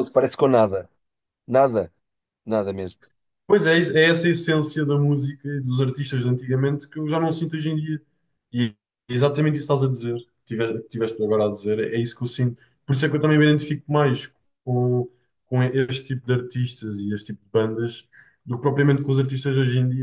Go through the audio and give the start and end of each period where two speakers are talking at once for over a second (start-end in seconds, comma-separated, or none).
none